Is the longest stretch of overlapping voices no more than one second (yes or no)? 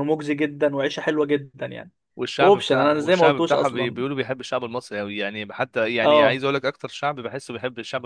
no